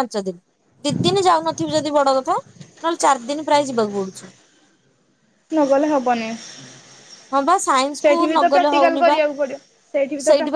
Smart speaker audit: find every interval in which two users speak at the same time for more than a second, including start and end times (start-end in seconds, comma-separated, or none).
7.3-9.2